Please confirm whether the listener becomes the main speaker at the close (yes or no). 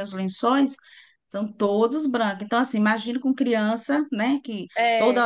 no